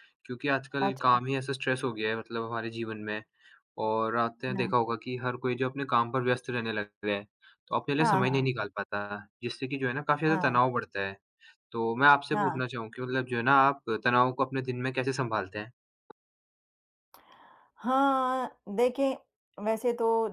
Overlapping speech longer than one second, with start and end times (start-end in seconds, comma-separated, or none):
none